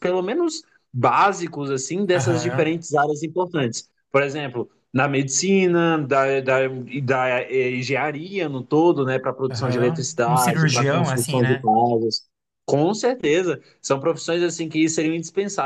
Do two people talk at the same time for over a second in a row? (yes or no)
yes